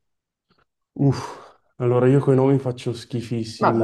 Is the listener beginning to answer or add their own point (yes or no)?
yes